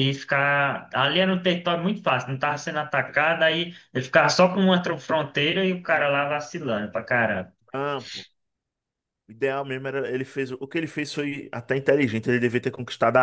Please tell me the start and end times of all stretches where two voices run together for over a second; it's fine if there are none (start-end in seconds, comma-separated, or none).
none